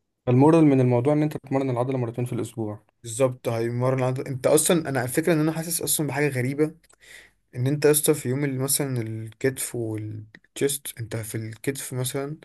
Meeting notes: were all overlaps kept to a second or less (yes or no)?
yes